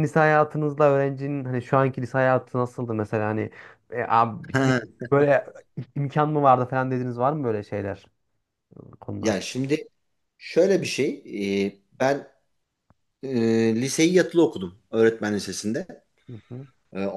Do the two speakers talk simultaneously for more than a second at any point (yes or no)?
no